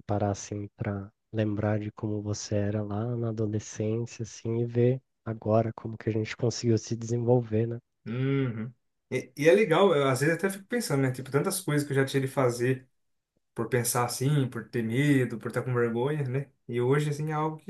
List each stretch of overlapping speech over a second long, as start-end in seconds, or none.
none